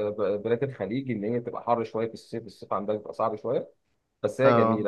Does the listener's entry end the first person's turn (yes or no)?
no